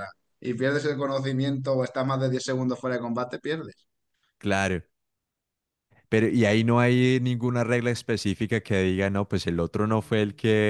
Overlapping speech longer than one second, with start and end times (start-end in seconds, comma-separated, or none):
none